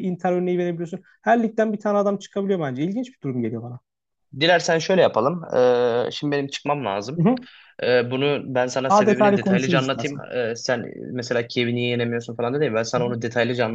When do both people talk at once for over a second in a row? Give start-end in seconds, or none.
8.9-10.2